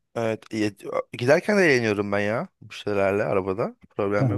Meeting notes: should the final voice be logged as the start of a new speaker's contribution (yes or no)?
yes